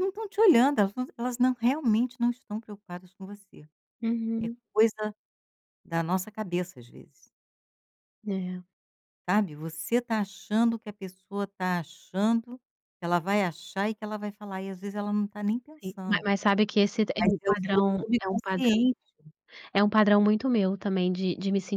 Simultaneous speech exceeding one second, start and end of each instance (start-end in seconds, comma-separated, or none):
17.2-18.8